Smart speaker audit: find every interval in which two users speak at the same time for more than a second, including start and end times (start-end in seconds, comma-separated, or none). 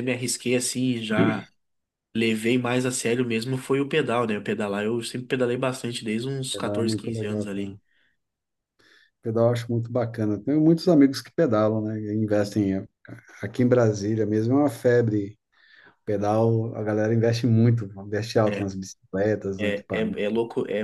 6.5-7.8